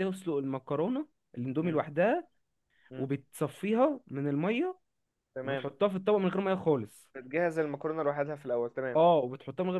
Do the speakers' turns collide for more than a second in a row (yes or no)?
no